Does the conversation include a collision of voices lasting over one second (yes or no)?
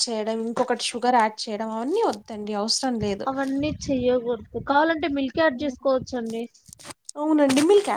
no